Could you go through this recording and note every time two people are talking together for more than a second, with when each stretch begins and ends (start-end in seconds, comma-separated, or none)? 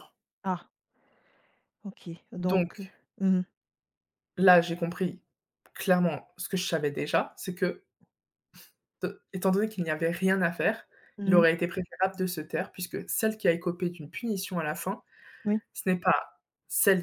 none